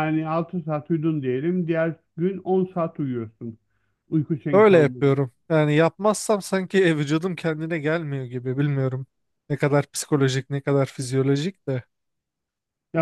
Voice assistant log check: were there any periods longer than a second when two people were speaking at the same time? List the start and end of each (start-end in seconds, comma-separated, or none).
none